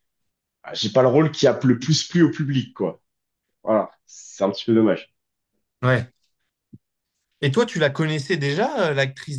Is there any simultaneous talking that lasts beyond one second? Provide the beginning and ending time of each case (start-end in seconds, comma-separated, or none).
none